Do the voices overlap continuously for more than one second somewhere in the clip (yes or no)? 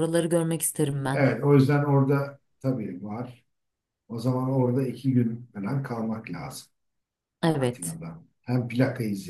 no